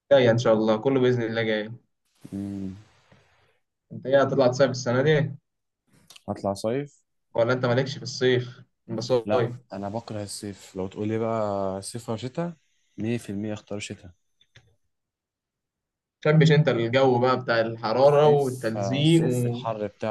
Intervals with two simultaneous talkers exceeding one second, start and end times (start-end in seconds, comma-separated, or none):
18.0-19.2